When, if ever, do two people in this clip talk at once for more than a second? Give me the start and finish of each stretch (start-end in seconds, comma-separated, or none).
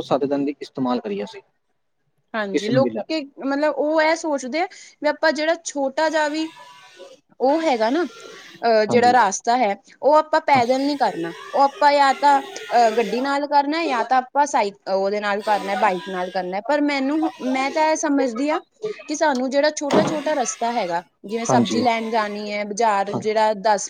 none